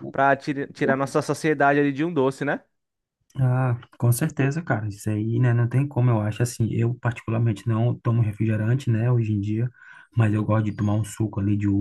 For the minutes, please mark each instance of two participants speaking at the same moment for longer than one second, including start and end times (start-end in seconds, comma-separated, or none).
none